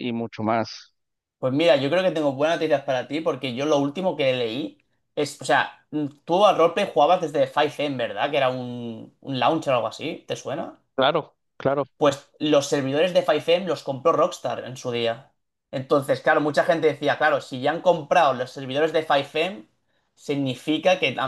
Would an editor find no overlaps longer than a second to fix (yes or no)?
yes